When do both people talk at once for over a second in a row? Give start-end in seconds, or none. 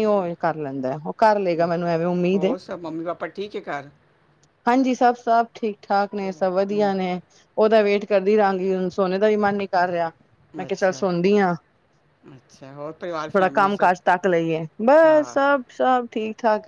none